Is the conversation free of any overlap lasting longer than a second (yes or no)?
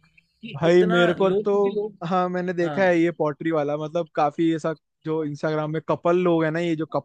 no